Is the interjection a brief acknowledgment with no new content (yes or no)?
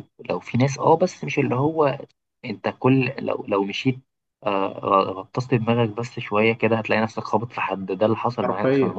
no